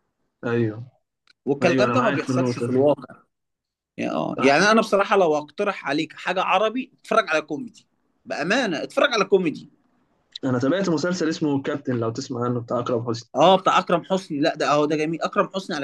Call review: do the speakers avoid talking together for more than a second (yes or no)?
no